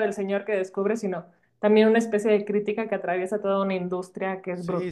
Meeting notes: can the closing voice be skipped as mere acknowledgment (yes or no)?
no